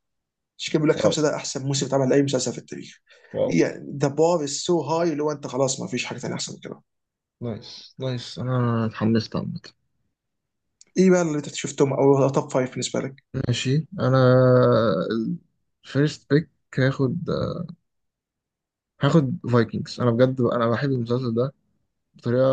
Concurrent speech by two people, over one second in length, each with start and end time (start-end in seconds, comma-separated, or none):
none